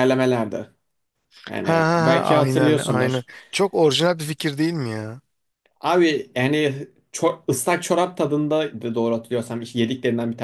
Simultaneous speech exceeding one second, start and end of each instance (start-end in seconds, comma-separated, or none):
1.6-3.3